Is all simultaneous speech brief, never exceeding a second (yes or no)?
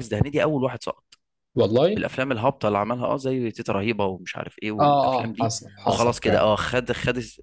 no